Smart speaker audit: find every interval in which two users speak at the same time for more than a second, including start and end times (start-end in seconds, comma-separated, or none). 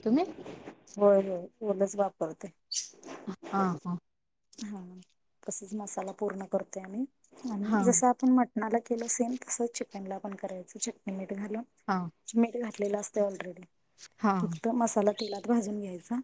none